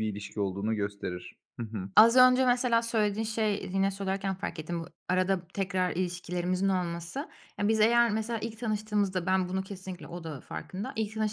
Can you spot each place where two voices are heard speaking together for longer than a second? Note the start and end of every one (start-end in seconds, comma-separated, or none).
none